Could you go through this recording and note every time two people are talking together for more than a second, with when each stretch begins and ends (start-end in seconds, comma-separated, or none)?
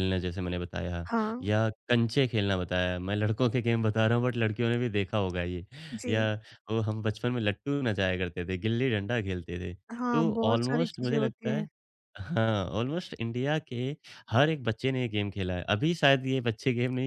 10.1-11.7